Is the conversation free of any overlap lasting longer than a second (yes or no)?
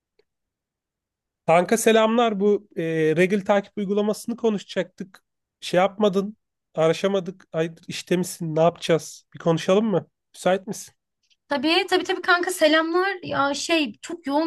yes